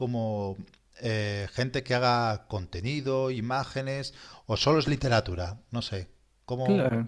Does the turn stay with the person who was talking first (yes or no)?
no